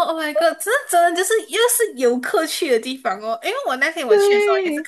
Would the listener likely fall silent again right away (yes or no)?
yes